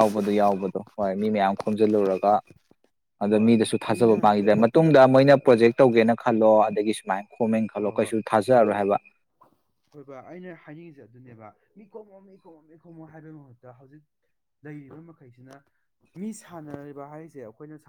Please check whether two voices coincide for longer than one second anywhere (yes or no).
yes